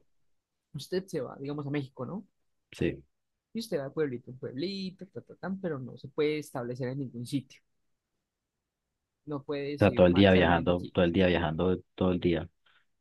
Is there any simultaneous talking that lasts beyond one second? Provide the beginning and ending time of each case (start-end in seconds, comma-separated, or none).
9.8-11.0